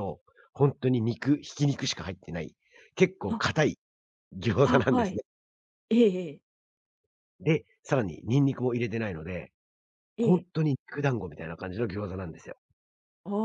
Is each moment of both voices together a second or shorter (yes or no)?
yes